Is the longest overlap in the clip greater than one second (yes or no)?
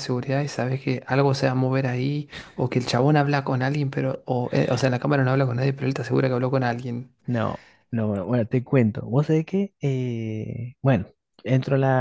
no